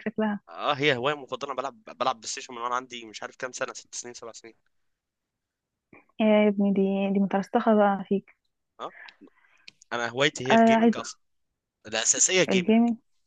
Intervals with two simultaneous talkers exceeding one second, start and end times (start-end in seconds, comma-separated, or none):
none